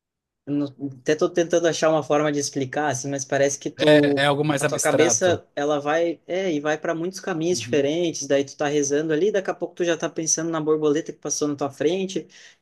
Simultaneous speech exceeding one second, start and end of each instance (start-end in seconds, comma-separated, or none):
3.8-5.4